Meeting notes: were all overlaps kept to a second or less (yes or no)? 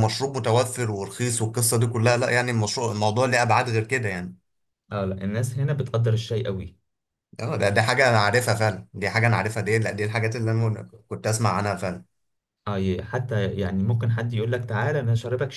yes